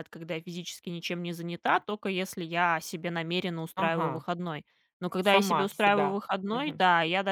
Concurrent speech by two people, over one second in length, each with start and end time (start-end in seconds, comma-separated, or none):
5.3-6.8